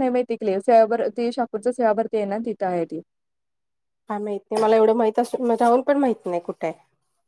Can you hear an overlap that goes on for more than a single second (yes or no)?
no